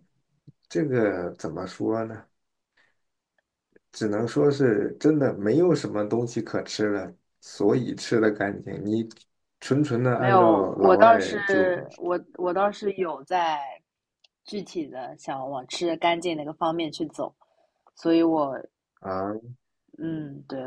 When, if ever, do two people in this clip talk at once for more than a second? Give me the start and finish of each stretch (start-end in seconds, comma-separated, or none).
10.2-11.4